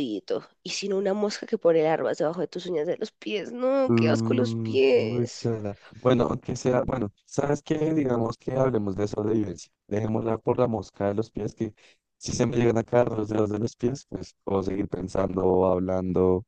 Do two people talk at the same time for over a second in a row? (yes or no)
yes